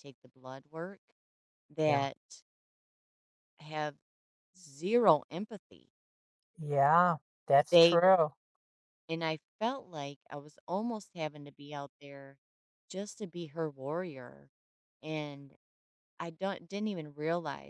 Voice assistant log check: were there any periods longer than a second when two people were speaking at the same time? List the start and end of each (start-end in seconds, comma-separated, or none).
none